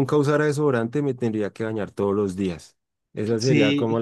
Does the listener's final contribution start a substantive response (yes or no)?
no